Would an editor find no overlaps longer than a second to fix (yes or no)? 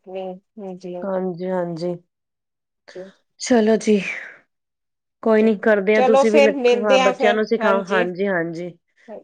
no